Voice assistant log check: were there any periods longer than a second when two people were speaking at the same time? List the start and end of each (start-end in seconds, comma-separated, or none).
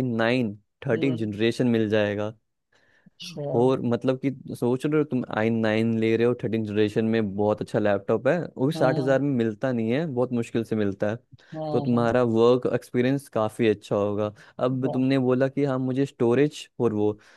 none